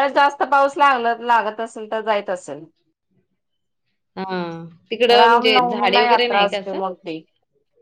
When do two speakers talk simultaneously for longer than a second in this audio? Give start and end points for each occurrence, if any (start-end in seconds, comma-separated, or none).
5.2-6.8